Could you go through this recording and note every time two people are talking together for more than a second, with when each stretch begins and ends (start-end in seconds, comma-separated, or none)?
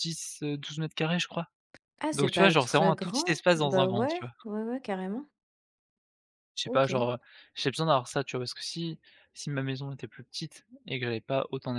2.1-4.3